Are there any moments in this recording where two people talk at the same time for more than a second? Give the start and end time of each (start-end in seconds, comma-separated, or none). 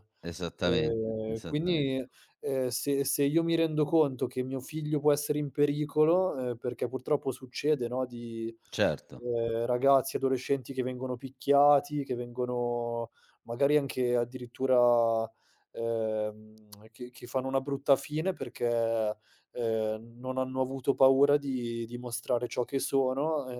0.6-2.0